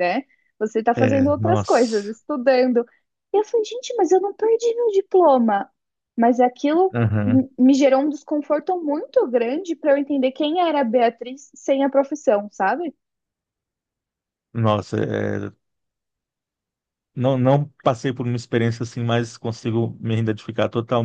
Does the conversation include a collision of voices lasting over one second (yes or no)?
yes